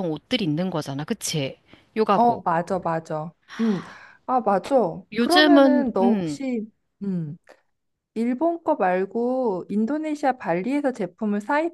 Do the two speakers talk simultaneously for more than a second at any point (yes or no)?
yes